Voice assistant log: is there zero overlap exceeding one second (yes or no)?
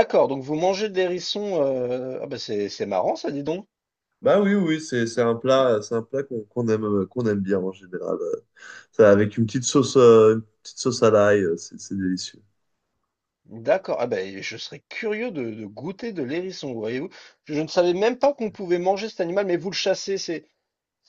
yes